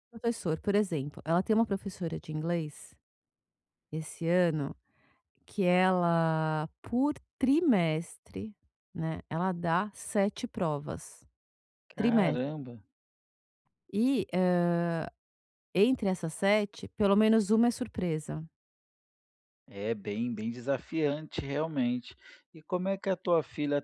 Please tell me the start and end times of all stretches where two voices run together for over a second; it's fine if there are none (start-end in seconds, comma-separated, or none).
none